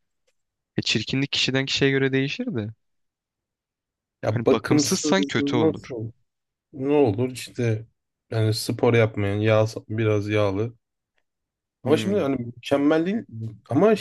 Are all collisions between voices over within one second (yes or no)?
no